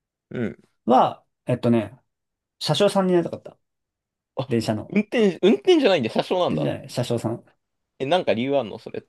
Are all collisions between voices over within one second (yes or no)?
yes